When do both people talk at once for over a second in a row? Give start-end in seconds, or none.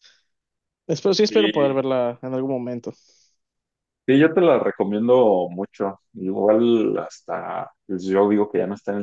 none